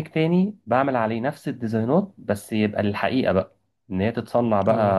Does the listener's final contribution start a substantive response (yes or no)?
no